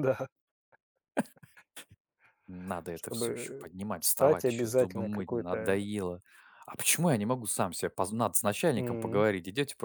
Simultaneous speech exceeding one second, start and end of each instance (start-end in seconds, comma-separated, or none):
2.9-5.8